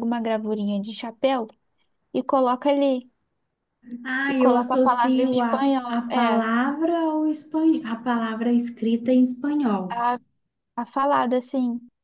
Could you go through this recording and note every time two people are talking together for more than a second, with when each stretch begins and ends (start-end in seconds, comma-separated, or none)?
4.3-6.5